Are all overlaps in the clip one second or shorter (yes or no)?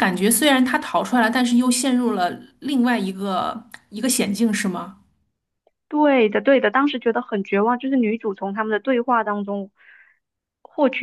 yes